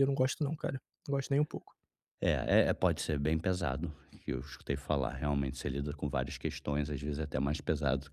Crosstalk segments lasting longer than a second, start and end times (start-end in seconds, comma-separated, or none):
none